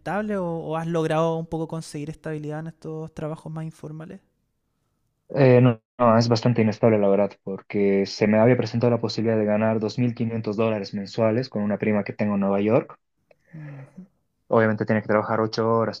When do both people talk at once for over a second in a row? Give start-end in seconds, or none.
none